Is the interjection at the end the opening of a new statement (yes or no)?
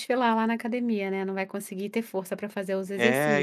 yes